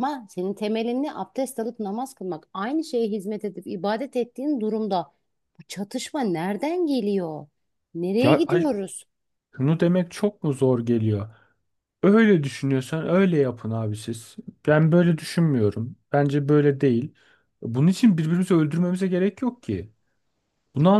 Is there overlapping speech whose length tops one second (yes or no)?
no